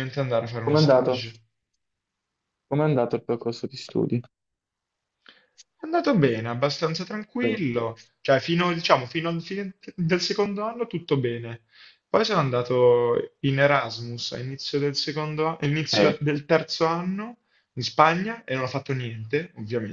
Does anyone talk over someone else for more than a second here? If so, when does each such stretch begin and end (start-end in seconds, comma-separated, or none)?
none